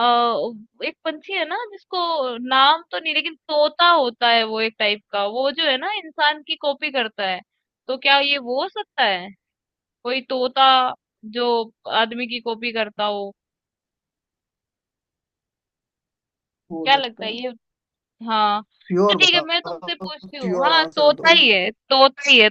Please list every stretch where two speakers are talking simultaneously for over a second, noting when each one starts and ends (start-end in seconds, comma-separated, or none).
19.1-21.3